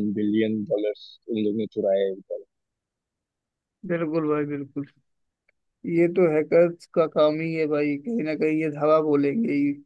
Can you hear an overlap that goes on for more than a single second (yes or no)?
no